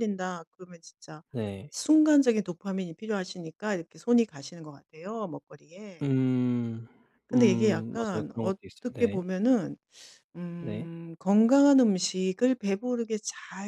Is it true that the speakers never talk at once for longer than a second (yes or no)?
no